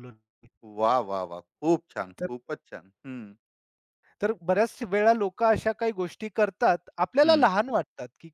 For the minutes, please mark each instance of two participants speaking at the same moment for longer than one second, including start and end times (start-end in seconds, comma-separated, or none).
none